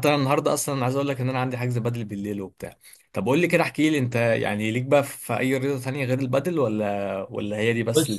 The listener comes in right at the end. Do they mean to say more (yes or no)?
yes